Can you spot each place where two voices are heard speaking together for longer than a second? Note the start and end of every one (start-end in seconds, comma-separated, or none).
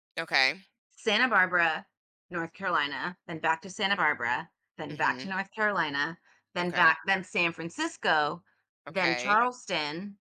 none